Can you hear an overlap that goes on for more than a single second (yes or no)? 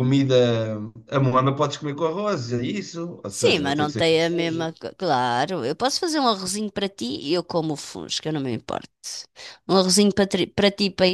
yes